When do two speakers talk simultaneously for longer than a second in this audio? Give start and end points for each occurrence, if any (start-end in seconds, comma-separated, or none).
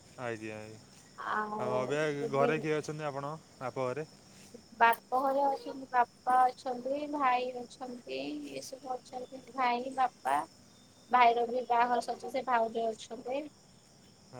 1.3-2.5